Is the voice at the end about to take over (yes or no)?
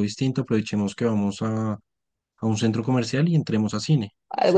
yes